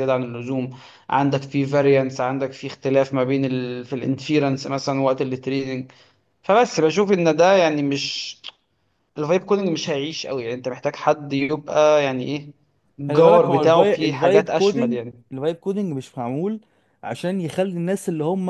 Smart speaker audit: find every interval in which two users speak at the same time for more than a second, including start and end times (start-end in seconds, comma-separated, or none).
13.1-15.2